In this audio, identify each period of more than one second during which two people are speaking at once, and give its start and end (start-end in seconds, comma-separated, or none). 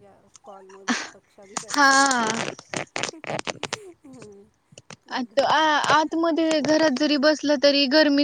none